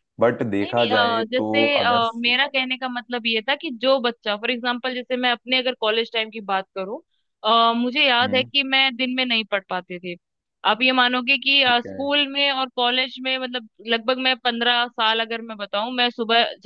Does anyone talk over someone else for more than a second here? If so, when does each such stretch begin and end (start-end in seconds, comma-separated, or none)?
0.7-2.0